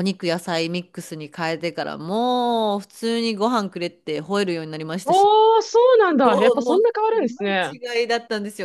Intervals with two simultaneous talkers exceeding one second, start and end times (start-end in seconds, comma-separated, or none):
6.2-7.7